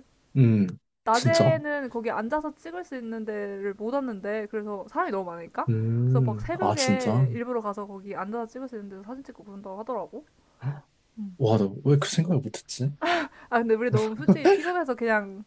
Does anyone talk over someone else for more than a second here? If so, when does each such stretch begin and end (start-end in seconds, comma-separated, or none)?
6.0-7.3